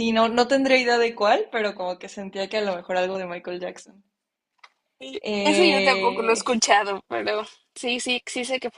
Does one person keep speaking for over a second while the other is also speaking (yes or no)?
yes